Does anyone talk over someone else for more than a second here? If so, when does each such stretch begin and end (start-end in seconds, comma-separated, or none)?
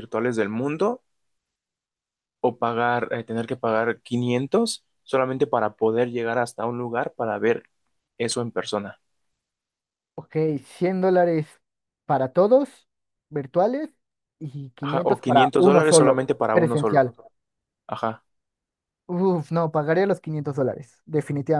14.8-17.1